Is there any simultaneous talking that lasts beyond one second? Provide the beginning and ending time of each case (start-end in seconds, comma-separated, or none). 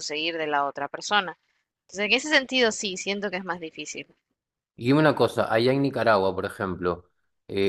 none